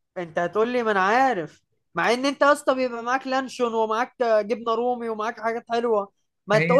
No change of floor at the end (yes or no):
yes